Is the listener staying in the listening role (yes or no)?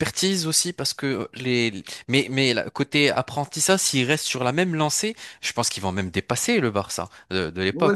no